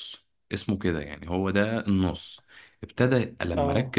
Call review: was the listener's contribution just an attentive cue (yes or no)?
yes